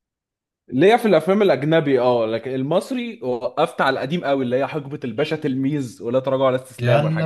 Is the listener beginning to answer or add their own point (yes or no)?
yes